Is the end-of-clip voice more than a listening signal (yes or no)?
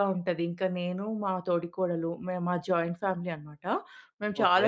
no